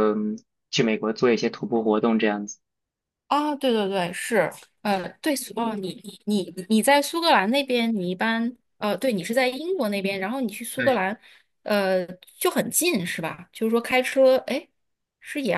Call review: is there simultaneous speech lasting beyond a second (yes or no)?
no